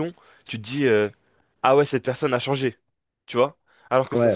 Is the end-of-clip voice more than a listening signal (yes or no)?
no